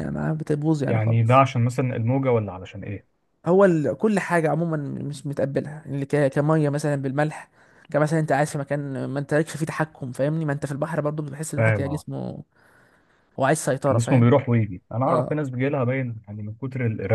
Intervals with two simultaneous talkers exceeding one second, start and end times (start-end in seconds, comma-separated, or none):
none